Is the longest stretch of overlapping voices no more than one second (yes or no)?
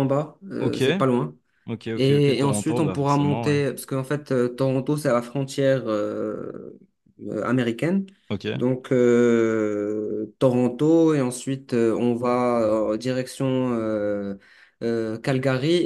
no